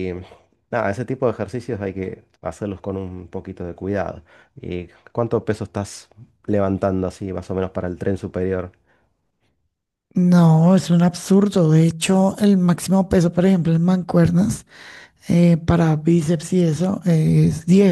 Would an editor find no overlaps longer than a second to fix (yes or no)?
yes